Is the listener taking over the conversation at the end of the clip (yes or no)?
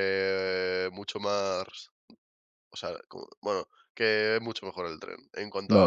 yes